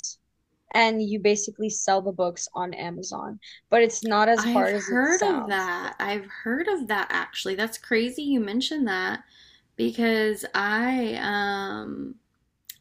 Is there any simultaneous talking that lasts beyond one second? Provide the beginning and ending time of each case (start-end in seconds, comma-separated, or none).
4.4-5.7